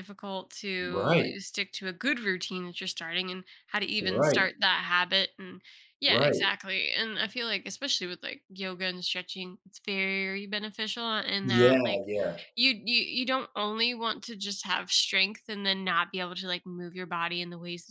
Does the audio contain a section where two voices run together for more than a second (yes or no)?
no